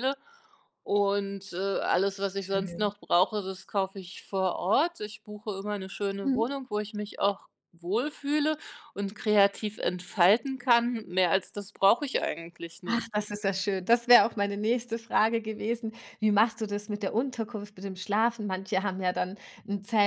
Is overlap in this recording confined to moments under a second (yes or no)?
yes